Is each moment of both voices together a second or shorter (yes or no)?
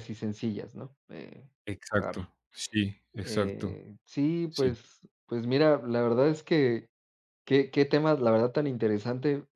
yes